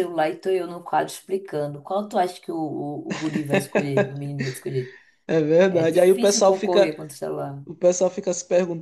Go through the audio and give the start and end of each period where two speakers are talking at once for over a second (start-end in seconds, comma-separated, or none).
5.7-6.9